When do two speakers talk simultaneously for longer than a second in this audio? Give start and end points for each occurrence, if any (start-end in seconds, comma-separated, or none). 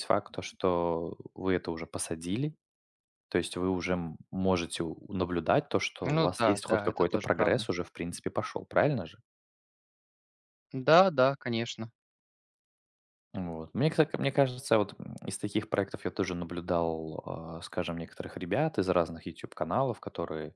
6.0-7.6